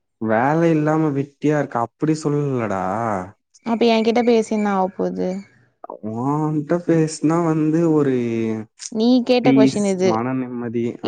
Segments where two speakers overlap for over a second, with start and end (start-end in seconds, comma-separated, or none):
none